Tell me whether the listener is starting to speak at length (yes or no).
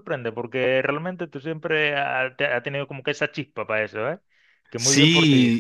yes